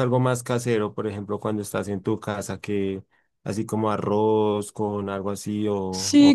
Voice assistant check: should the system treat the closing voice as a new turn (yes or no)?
yes